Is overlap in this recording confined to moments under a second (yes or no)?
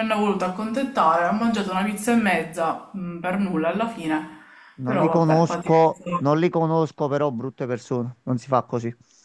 no